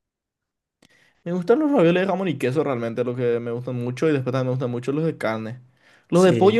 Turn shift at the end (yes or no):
no